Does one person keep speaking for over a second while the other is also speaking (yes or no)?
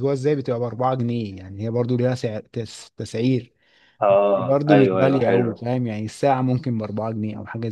yes